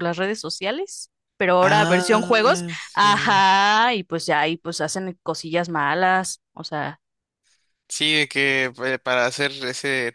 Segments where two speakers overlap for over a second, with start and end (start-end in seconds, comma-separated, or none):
1.6-3.5